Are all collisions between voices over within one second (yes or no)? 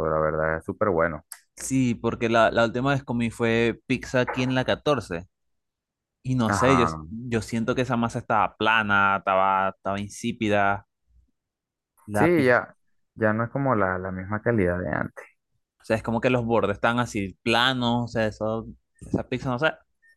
yes